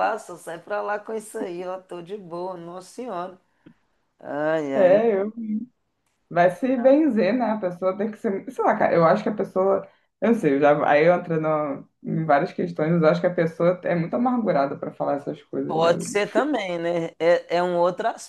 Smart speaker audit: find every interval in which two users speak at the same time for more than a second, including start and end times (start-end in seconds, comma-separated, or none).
none